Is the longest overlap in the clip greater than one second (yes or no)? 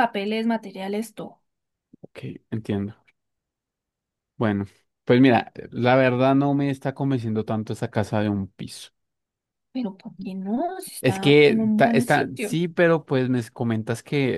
yes